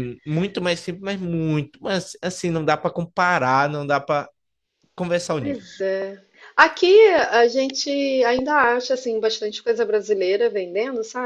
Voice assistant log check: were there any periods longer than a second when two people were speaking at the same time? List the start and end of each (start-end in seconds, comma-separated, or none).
none